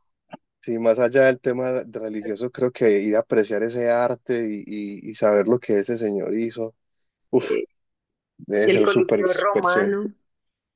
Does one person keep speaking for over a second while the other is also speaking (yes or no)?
yes